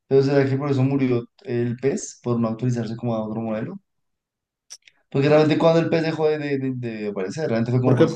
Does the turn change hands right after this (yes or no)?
yes